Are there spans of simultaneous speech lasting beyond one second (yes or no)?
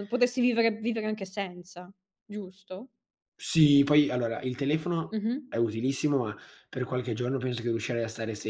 no